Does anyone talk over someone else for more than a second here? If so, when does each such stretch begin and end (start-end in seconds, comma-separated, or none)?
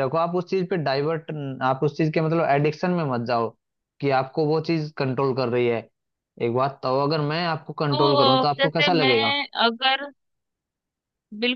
7.9-9.3